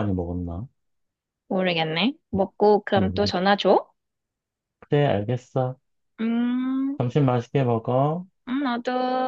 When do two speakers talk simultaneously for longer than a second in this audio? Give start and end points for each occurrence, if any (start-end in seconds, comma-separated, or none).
none